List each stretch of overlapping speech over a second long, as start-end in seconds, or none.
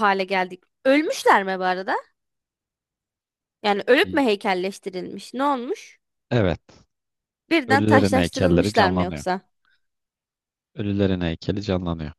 7.7-9.2